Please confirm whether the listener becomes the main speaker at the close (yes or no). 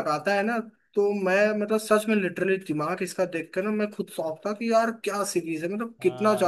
yes